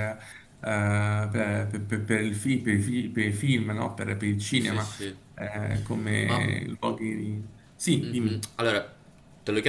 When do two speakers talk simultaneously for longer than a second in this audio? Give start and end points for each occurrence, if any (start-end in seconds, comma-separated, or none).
none